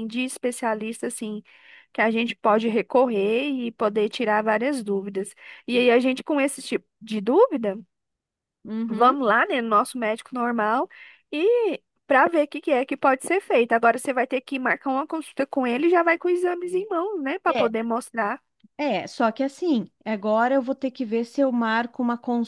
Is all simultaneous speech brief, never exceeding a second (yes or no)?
yes